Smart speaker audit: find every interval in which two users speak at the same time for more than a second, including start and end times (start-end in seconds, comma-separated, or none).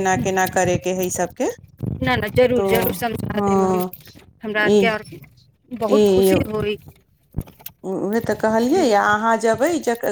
none